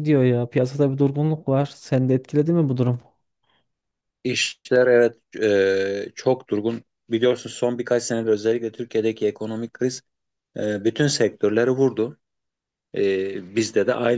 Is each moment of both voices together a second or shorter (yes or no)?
yes